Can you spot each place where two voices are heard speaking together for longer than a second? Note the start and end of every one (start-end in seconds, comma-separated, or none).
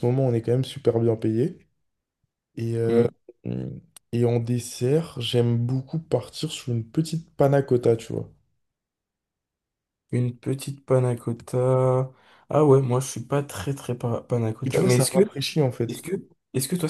none